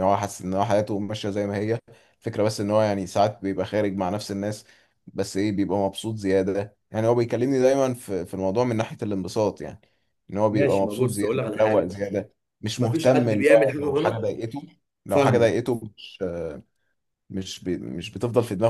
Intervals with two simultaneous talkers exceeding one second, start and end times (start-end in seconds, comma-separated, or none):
10.5-11.9, 12.8-14.2